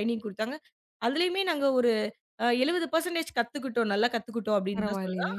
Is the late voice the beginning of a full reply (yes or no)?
no